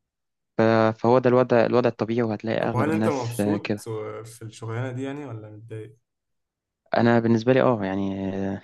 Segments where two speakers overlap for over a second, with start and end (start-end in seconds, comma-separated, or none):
2.6-3.9